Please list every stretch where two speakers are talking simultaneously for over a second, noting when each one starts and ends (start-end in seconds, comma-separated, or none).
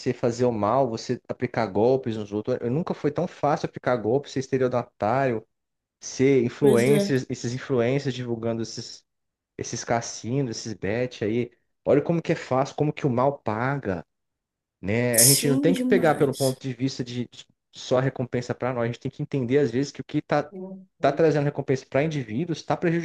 15.1-16.6